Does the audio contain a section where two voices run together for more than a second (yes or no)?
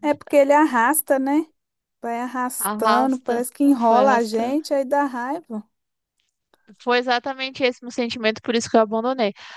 yes